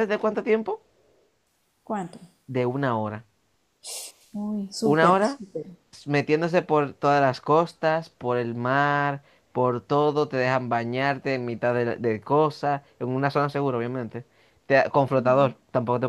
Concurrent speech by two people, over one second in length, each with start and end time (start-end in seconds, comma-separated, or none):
none